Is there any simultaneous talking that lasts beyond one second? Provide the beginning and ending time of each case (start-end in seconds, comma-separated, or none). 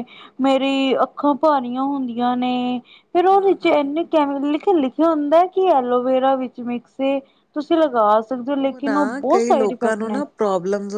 8.8-10.2